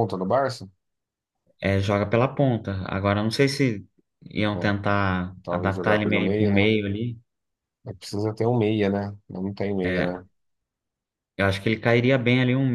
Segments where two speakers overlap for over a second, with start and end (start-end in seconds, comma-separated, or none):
5.4-6.7